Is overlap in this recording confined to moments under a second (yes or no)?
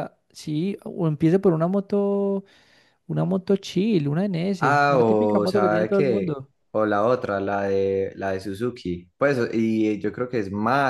no